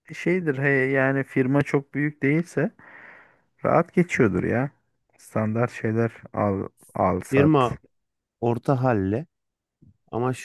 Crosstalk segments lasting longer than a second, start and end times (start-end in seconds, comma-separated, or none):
none